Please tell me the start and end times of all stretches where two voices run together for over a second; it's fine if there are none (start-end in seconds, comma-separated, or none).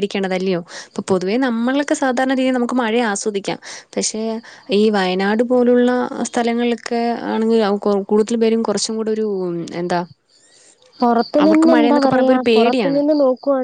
11.4-13.0